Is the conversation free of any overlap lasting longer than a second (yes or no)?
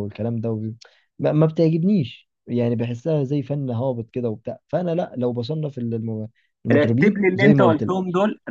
no